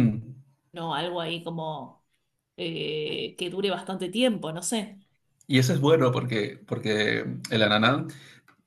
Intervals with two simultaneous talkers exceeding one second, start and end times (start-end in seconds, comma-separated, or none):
none